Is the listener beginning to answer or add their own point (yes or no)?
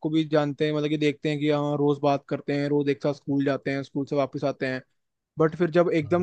no